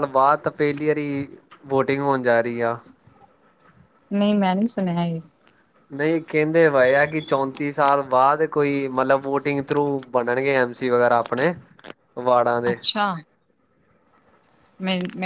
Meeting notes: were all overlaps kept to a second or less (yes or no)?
yes